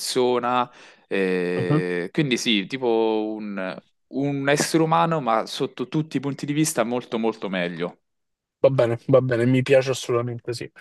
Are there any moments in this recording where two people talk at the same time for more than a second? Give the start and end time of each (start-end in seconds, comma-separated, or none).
none